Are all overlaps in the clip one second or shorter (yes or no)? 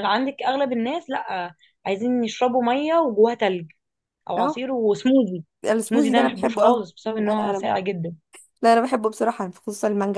no